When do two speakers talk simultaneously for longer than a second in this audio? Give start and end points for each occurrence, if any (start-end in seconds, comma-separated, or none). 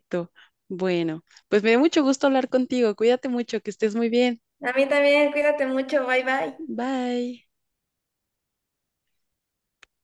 none